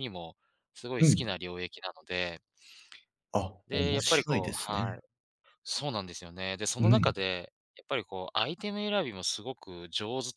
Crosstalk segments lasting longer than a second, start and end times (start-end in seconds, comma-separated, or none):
3.7-5.0